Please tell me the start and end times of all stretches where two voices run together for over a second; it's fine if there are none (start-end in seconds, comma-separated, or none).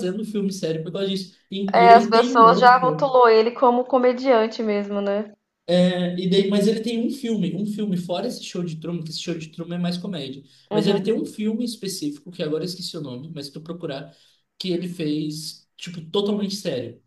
1.7-3.1